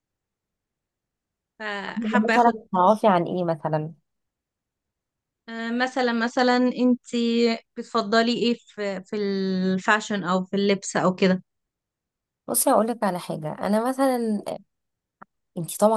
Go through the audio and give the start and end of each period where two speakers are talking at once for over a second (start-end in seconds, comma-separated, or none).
none